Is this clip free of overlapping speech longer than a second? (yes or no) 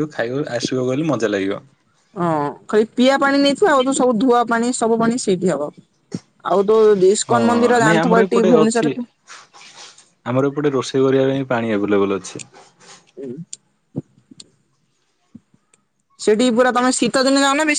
no